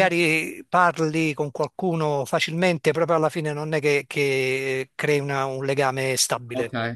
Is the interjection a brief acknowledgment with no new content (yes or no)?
no